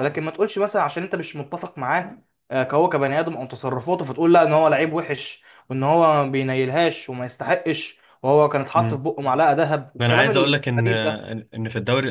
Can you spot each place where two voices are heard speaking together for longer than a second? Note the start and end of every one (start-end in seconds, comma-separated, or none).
10.0-11.3